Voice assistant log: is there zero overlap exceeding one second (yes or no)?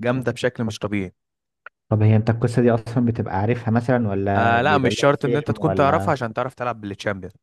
no